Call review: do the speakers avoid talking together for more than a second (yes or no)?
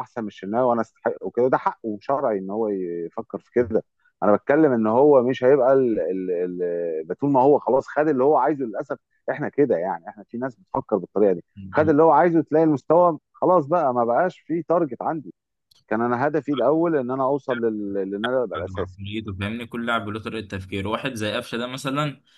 yes